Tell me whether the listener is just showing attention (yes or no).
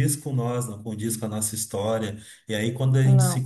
yes